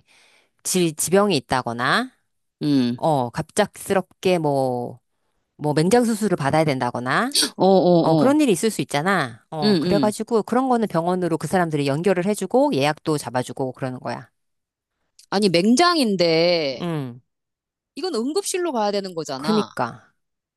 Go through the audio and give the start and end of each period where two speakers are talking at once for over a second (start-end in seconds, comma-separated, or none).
none